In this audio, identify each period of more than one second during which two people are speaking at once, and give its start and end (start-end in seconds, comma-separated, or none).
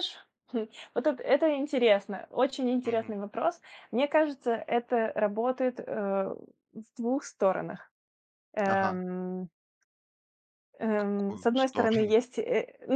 10.9-12.2